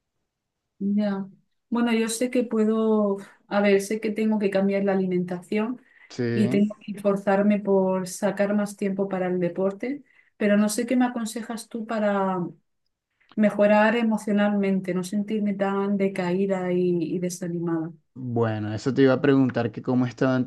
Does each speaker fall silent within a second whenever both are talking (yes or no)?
yes